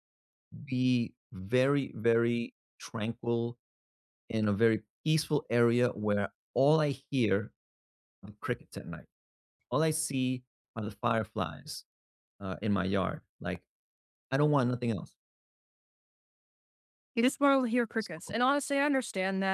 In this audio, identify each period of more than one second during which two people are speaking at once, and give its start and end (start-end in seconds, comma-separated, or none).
none